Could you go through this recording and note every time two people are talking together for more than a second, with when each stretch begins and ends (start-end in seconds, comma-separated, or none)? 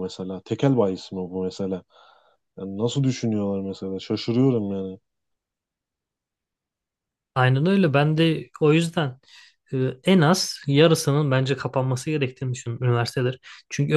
none